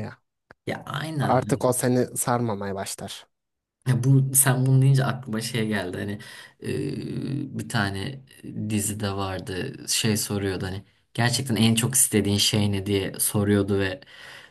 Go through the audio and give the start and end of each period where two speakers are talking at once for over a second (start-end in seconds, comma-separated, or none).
none